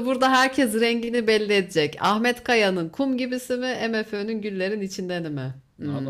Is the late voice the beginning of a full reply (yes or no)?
yes